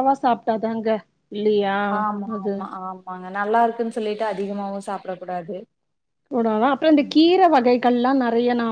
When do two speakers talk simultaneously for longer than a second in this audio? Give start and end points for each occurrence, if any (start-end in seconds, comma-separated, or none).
none